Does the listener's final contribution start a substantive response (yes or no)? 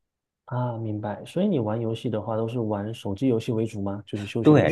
yes